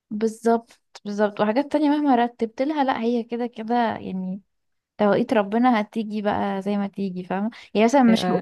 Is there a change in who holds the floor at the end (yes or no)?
no